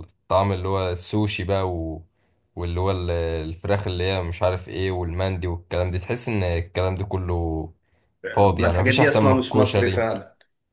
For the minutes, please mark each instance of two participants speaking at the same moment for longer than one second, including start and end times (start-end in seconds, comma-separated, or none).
8.5-10.1